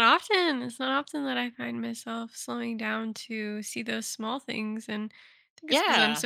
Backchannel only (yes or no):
yes